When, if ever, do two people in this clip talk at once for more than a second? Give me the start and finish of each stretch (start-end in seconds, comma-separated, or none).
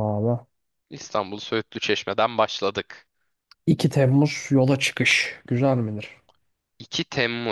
none